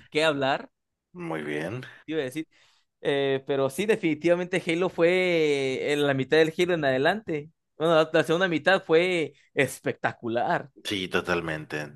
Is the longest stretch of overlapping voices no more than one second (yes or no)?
yes